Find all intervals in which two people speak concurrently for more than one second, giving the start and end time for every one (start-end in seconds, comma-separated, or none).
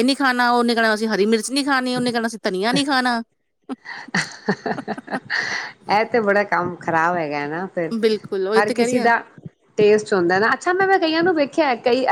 none